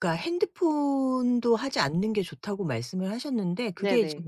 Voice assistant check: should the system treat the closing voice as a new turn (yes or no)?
no